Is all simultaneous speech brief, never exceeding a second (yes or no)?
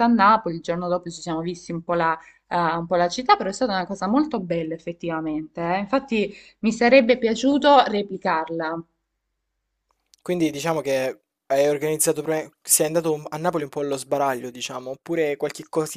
yes